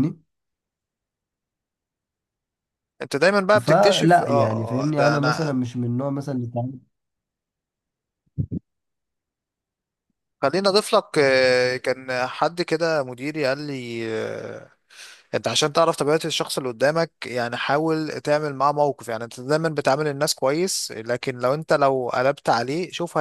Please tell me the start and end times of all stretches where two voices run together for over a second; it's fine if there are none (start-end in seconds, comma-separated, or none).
3.6-5.5